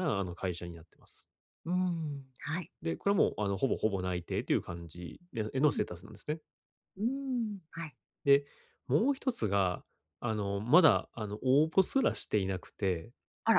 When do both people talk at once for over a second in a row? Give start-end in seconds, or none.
none